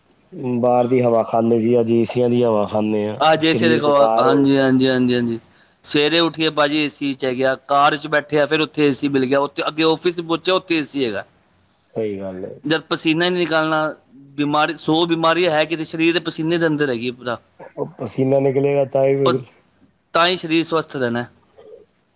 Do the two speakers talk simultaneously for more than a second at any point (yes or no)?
yes